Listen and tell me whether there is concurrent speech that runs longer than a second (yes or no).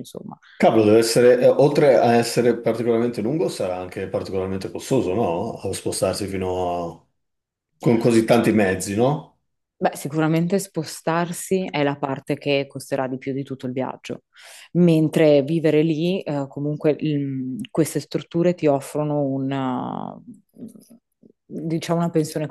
no